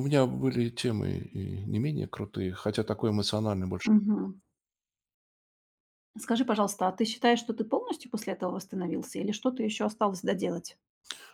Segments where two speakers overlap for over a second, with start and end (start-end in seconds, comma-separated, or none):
none